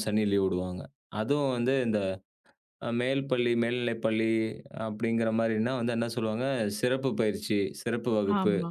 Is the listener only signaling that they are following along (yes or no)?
yes